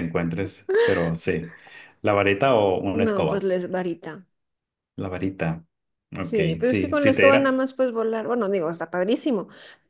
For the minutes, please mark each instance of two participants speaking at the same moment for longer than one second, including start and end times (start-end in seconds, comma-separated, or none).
6.2-7.6